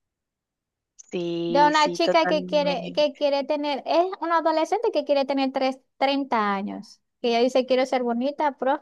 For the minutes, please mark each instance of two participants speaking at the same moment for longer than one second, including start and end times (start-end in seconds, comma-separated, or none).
1.5-3.2